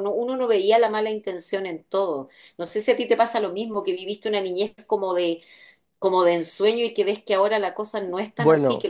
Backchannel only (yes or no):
yes